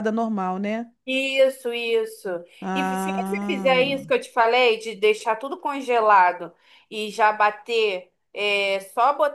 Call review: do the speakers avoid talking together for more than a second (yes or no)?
no